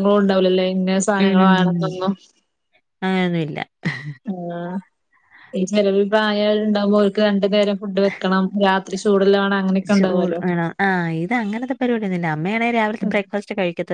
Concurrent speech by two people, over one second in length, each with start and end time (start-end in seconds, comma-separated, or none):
none